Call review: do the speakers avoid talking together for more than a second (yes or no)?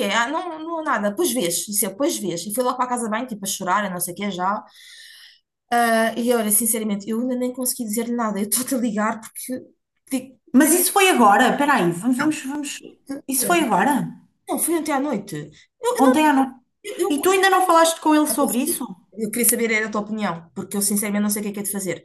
yes